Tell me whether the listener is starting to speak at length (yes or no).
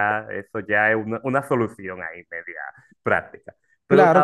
yes